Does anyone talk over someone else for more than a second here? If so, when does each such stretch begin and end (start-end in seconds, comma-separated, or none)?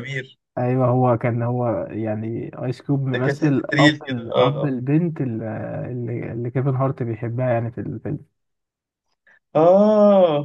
3.1-4.8